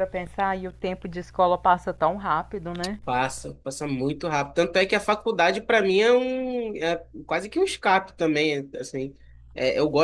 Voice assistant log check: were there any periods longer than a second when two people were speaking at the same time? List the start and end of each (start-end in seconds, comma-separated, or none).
none